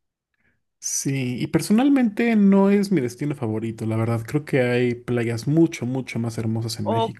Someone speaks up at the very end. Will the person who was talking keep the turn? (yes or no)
no